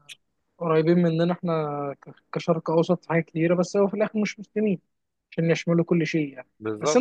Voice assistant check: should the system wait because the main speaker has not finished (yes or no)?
yes